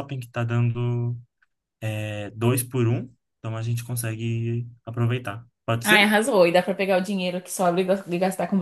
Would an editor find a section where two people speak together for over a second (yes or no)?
no